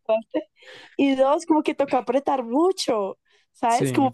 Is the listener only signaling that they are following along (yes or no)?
yes